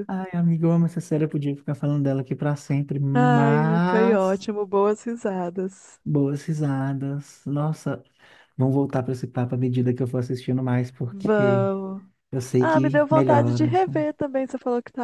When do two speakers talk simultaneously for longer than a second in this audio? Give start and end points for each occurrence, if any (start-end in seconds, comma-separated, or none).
3.1-4.5, 12.6-14.1